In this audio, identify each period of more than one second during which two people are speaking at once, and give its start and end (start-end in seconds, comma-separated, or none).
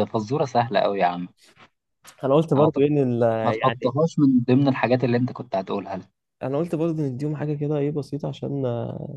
none